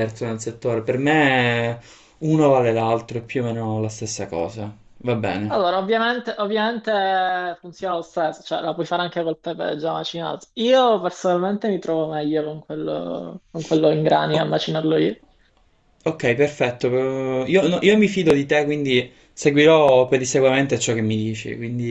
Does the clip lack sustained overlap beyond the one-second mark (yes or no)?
yes